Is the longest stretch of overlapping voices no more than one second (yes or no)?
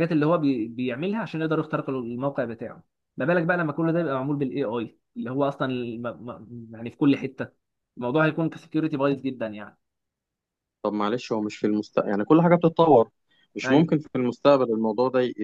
yes